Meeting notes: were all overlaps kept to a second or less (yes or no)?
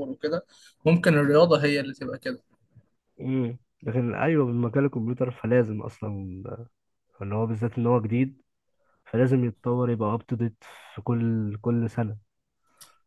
yes